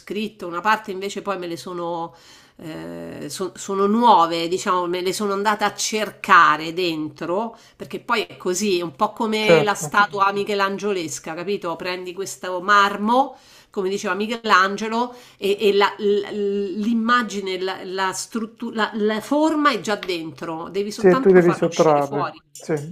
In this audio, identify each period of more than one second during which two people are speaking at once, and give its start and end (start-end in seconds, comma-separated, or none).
20.9-22.4